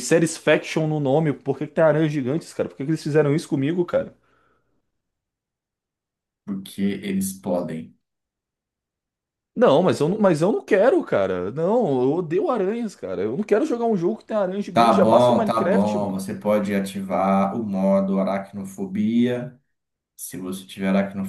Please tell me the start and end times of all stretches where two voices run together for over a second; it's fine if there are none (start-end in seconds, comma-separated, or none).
14.7-16.3